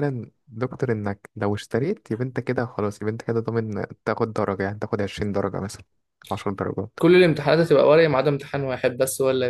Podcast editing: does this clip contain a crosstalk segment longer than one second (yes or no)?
no